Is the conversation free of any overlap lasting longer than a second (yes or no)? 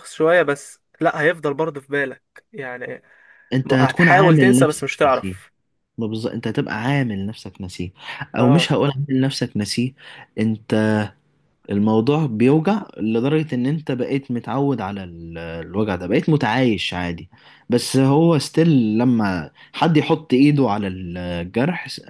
no